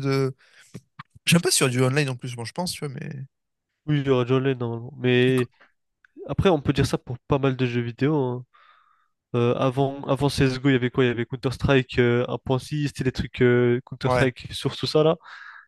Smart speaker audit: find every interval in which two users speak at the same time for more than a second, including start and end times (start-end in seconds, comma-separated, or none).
none